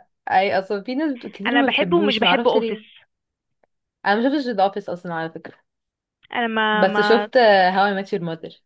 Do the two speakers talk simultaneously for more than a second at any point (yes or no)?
yes